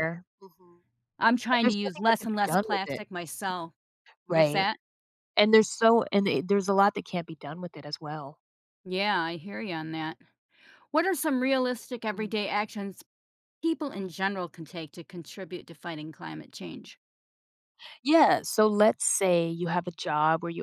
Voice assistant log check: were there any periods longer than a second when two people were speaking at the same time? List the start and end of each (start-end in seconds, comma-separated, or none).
1.5-3.0